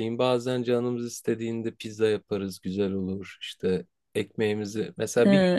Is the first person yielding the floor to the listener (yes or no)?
no